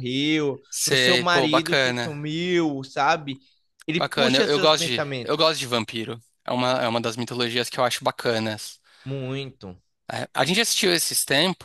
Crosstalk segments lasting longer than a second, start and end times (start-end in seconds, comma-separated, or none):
0.7-2.2, 4.0-5.5